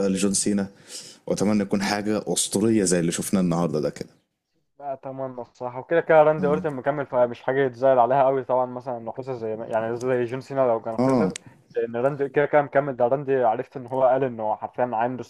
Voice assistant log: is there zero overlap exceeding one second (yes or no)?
yes